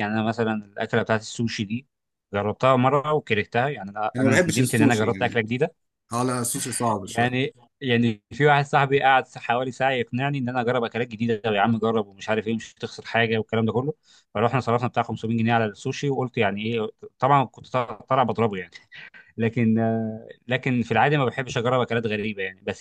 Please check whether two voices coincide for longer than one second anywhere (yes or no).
yes